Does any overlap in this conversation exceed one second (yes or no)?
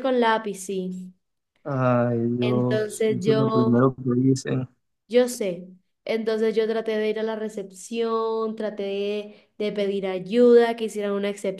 yes